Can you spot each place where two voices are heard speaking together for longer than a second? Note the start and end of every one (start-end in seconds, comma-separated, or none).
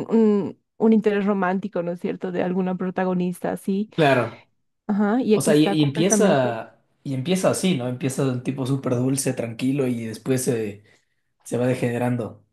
5.3-6.6